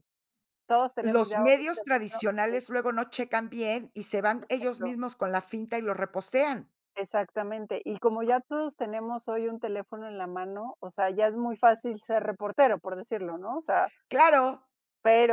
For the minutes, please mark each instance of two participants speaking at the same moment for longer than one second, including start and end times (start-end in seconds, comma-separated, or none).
1.0-2.2